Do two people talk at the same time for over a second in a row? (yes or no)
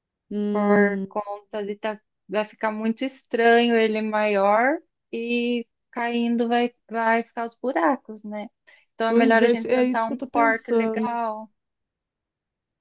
yes